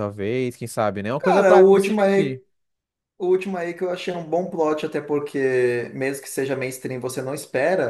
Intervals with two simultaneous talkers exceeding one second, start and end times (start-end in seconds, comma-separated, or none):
1.2-2.4